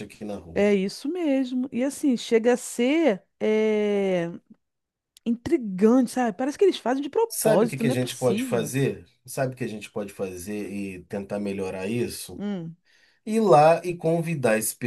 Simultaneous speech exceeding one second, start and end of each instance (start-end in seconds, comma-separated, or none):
7.3-8.7